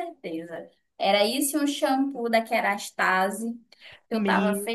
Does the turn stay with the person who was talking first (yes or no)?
no